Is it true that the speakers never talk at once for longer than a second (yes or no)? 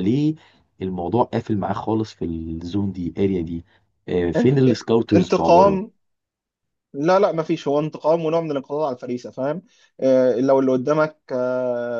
no